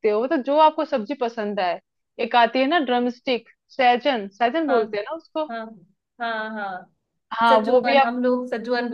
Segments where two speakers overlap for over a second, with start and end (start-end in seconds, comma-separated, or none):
none